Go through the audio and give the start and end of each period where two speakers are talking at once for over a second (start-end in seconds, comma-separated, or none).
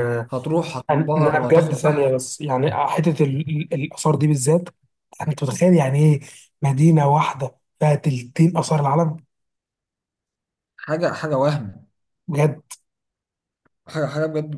0.7-2.2